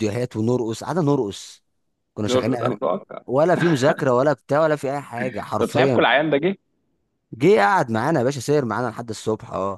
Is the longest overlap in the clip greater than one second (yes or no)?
no